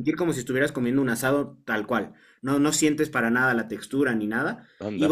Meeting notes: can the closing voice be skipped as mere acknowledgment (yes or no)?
yes